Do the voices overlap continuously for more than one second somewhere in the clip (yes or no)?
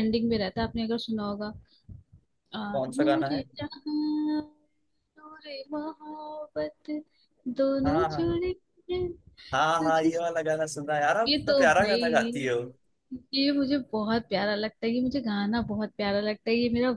yes